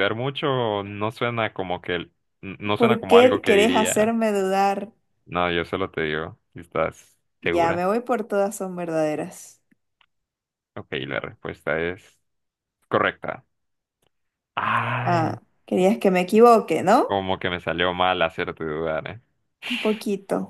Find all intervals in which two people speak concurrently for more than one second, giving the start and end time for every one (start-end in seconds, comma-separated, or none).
2.7-4.1